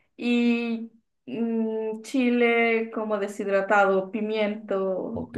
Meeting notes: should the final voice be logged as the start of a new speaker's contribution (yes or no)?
yes